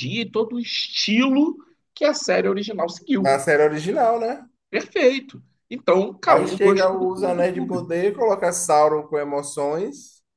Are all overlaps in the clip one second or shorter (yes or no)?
no